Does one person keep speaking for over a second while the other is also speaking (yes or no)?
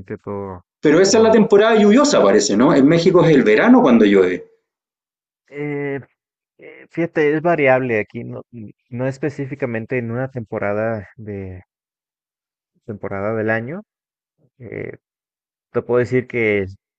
no